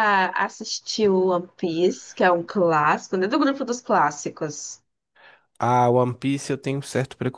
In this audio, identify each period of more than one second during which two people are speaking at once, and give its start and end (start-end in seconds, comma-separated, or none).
none